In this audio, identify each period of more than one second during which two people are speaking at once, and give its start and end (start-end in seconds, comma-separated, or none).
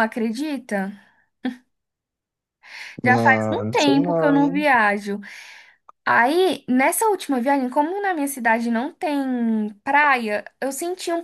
3.0-4.7